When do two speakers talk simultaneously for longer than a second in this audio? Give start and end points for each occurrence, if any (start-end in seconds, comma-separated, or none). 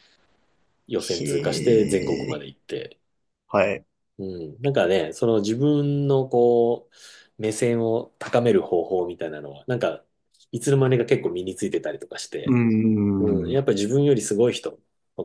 1.0-2.4